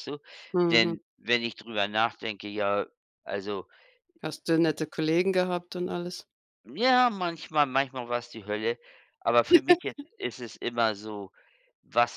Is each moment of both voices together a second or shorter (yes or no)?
yes